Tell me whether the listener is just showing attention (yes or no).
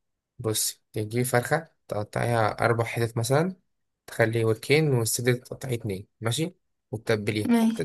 yes